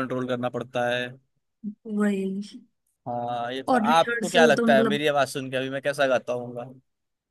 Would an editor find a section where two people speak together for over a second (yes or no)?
yes